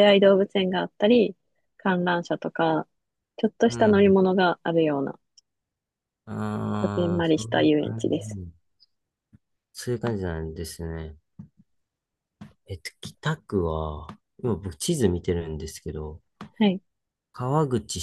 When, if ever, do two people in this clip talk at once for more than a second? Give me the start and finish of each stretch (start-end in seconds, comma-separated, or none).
6.7-8.4